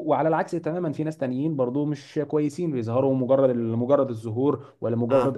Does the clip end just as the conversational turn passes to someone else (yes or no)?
no